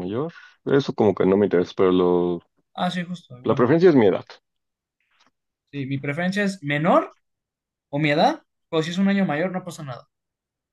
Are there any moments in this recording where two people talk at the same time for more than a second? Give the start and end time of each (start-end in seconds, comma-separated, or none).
none